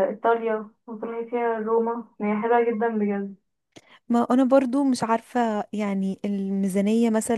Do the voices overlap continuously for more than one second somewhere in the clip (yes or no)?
no